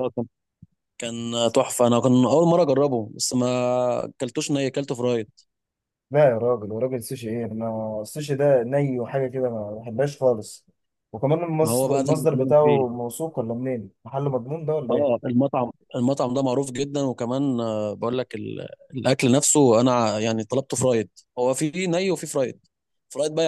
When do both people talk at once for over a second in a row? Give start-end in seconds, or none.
11.6-13.0